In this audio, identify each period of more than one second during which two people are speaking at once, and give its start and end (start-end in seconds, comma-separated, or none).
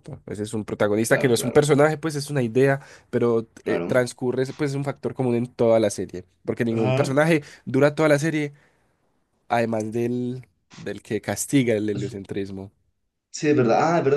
none